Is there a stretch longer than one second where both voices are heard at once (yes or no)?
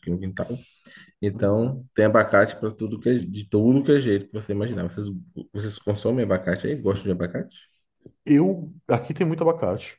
no